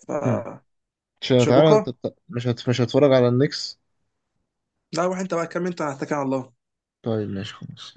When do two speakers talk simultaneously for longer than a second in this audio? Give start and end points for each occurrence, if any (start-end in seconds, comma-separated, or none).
none